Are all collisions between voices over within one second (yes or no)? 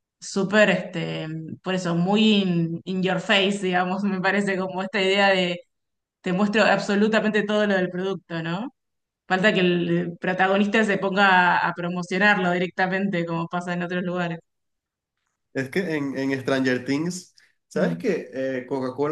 yes